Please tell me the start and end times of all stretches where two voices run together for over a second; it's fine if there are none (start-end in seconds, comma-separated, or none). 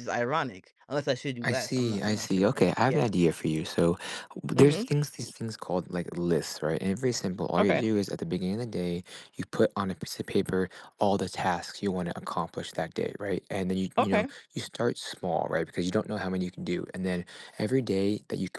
1.4-3.1